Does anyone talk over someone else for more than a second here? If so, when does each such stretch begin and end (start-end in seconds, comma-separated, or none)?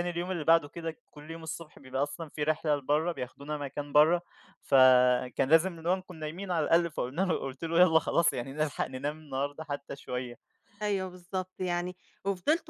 none